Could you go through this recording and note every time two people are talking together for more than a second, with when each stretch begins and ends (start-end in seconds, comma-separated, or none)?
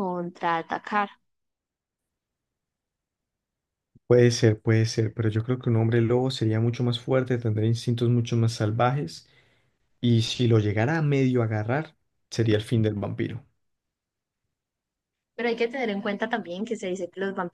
none